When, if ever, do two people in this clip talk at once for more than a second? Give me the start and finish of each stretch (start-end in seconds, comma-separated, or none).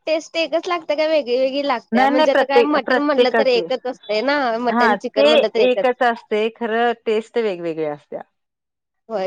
1.9-3.7